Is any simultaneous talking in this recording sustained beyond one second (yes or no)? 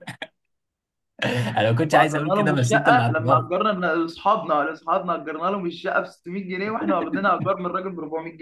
yes